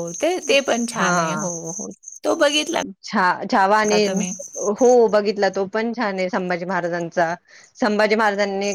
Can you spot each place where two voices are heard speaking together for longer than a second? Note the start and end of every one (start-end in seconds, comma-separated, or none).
none